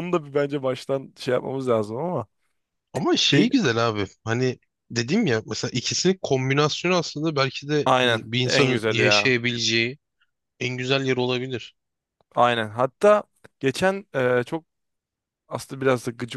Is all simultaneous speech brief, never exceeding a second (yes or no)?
no